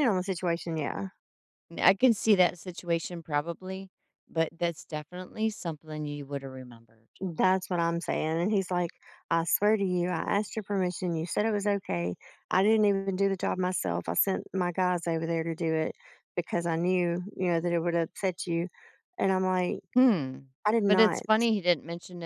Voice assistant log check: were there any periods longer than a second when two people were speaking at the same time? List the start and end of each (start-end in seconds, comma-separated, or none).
none